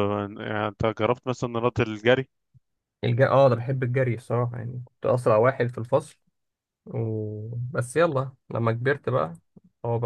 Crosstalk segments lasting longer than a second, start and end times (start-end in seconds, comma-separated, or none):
none